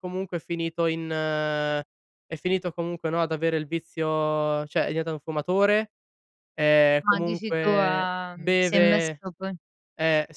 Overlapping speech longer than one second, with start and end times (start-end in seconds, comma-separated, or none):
7.0-9.2